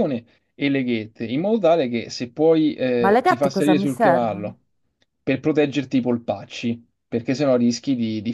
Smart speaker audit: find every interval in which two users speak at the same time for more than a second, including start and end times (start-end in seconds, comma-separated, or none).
3.0-4.5